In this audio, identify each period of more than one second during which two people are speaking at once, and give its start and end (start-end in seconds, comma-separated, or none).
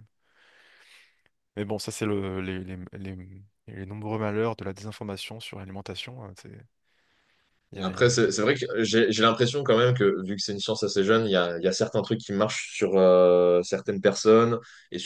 none